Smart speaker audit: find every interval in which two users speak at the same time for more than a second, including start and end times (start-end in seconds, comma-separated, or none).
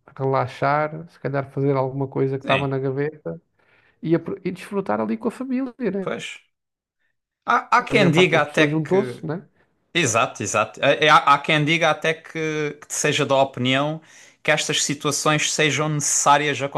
7.9-9.2